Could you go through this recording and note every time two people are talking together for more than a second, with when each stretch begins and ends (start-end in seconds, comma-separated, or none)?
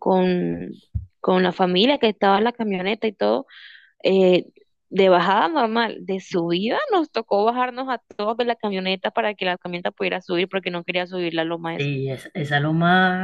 none